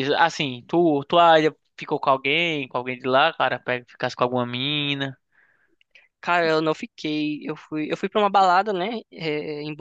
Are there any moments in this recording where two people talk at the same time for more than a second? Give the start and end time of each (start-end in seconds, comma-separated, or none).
none